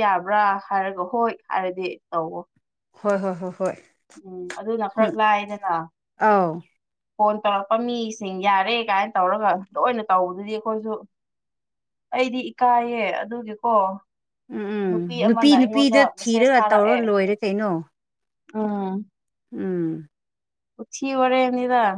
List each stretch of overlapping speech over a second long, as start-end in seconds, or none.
15.6-17.0